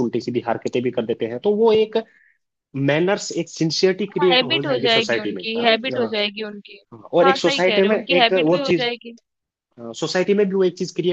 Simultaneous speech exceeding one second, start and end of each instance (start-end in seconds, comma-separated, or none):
4.2-6.2, 7.2-8.9